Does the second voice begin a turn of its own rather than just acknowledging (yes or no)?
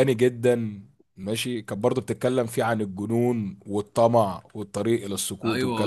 yes